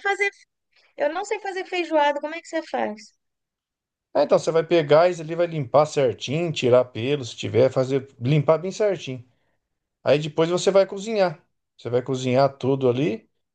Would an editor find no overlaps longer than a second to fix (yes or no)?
yes